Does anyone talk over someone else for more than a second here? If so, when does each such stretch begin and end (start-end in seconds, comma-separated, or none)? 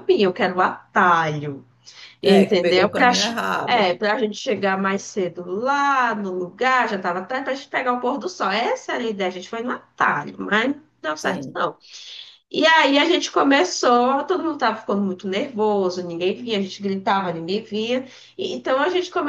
2.2-3.9